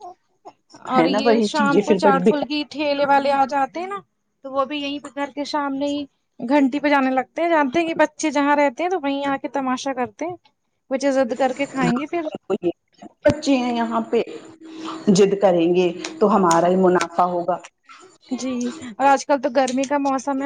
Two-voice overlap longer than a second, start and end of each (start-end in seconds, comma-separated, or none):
1.0-2.6